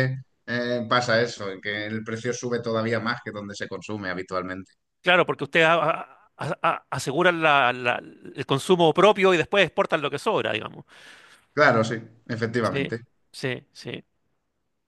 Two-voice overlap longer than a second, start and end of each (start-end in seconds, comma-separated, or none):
none